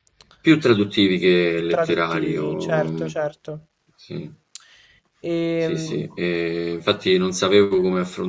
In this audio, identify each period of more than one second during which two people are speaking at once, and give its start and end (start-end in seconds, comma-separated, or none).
1.5-3.1